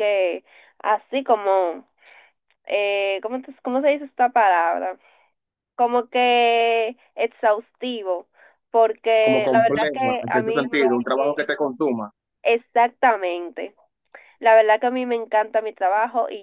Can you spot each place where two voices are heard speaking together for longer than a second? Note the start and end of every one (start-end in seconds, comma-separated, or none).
9.2-11.5